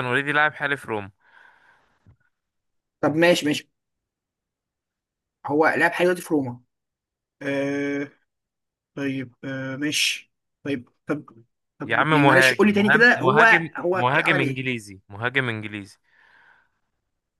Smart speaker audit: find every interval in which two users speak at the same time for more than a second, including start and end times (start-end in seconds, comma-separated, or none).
11.8-14.7